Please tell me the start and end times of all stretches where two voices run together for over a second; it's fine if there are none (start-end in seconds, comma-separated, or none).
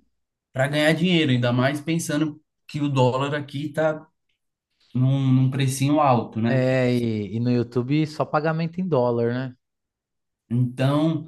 none